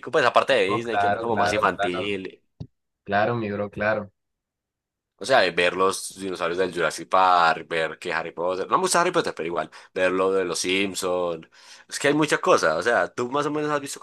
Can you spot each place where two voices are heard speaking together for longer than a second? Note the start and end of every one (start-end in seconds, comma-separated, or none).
0.7-2.2